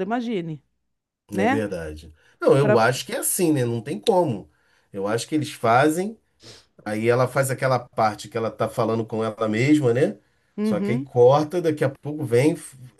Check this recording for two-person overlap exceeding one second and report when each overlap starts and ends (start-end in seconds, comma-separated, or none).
none